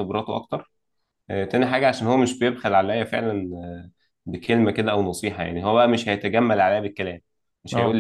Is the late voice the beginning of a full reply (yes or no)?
no